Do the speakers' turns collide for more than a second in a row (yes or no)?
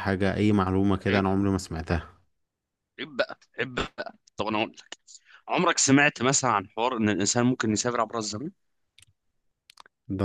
no